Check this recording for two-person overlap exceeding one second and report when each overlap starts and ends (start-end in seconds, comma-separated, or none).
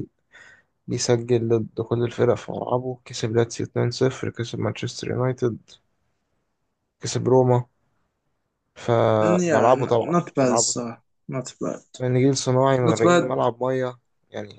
9.4-11.0